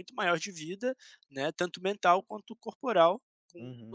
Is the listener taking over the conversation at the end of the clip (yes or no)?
yes